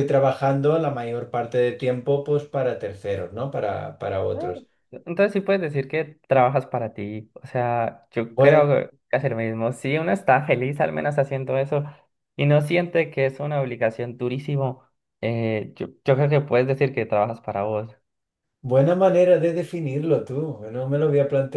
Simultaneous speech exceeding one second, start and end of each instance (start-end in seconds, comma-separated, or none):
none